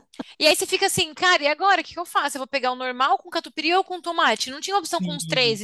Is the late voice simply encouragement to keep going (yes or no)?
no